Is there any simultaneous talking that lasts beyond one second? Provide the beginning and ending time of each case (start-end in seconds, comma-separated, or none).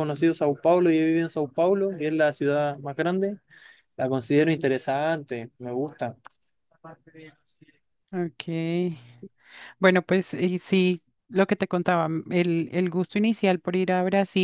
none